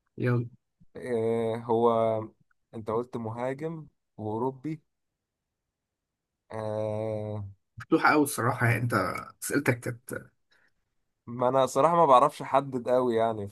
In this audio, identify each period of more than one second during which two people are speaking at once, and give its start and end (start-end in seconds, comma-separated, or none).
none